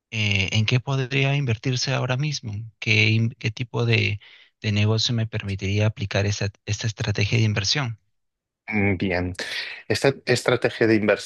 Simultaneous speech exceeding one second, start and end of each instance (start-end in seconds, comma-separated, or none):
none